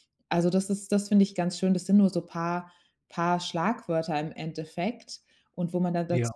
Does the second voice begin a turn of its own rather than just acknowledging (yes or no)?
no